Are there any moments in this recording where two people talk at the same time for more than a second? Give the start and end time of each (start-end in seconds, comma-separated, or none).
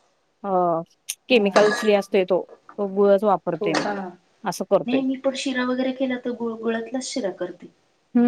none